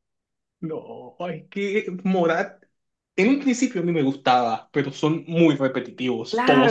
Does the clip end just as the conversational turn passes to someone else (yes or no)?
yes